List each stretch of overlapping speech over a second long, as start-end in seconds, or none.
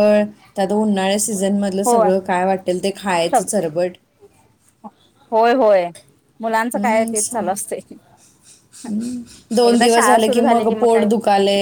9.7-11.1